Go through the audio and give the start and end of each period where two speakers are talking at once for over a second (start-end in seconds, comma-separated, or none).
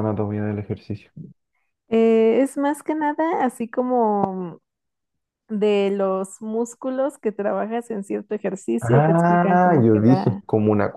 8.9-10.4